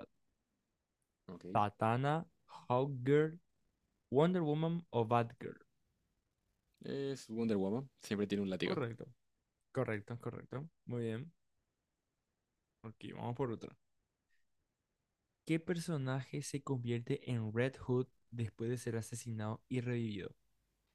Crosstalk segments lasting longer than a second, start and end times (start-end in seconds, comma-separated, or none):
none